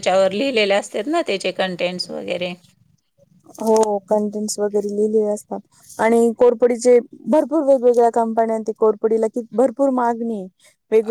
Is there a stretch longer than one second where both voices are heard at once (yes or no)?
no